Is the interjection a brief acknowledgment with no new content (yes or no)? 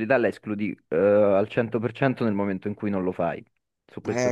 no